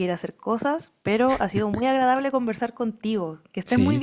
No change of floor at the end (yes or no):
no